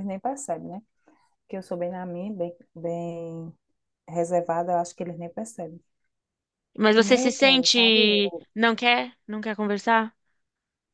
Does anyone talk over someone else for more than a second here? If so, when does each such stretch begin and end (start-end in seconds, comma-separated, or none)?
7.0-8.4